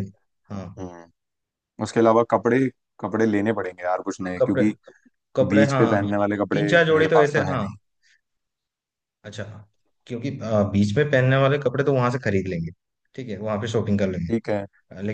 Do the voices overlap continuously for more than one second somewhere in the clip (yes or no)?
yes